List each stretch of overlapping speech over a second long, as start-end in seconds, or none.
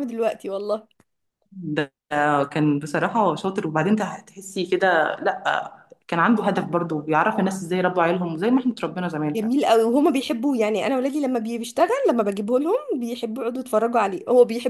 none